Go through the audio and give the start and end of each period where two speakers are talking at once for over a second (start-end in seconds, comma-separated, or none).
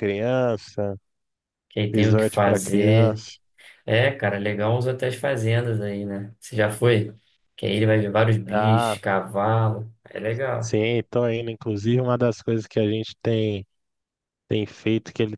1.9-3.2